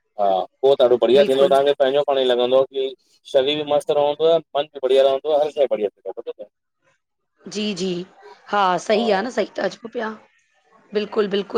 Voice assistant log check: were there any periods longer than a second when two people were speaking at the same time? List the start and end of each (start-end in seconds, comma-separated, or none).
none